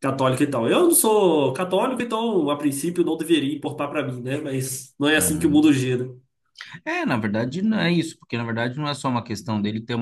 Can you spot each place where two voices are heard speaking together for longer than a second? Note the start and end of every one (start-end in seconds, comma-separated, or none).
none